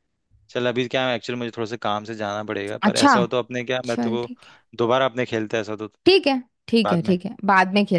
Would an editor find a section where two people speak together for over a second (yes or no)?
no